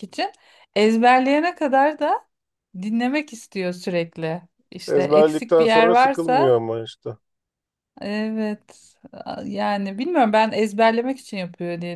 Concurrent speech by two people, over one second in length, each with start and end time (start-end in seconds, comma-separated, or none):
4.9-6.6